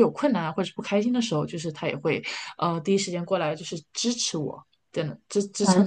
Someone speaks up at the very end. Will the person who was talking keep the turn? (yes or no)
no